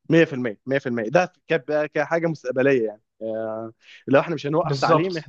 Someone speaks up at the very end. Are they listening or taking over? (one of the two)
listening